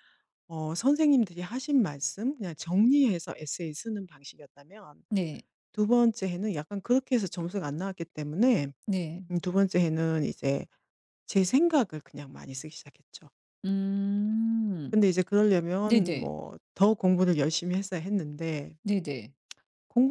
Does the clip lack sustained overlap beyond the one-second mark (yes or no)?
yes